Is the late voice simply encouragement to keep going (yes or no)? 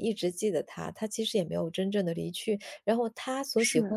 yes